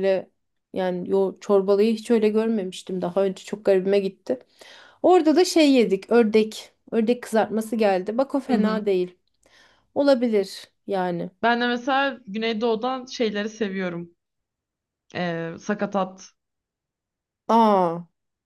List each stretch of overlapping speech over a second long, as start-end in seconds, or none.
none